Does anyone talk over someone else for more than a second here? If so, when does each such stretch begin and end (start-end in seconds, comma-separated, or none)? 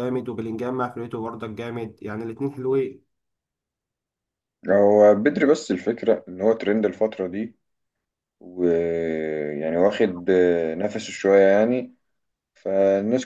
none